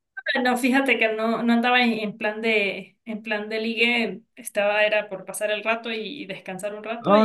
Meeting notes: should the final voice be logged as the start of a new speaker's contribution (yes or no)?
yes